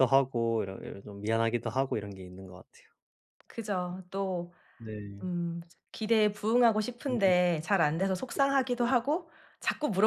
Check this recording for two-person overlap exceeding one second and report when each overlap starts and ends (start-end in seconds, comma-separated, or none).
none